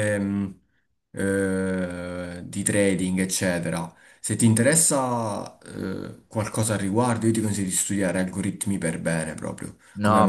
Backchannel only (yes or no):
no